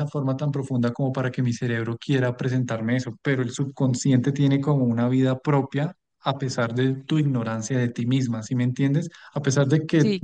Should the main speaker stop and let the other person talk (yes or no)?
no